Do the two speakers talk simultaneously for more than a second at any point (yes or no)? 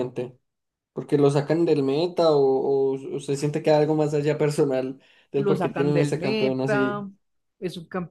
yes